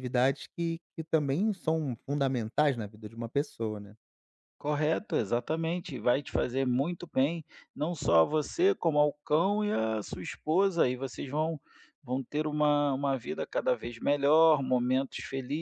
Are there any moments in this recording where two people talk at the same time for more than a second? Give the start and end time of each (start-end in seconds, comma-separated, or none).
none